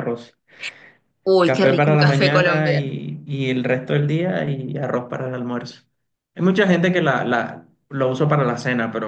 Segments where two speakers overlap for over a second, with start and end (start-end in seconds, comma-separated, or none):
1.4-2.9